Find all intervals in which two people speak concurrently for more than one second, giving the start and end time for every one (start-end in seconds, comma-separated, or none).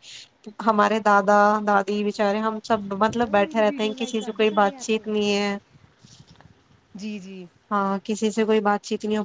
3.1-5.0